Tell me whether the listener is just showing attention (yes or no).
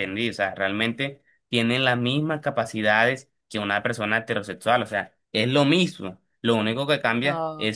yes